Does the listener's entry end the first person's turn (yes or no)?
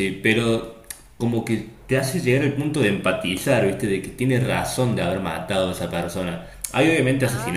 no